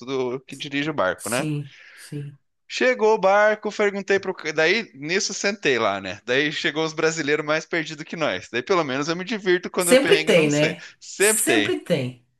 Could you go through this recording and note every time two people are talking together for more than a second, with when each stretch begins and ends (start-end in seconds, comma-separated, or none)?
9.8-11.8